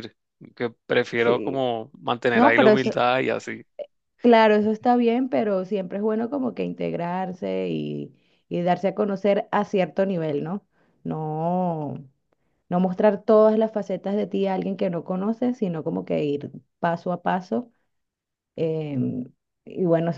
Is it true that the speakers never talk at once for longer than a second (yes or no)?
yes